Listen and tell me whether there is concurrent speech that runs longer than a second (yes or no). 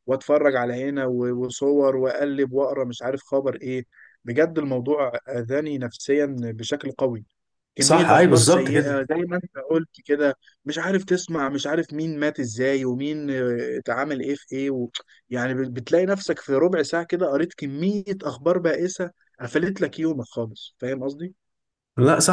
yes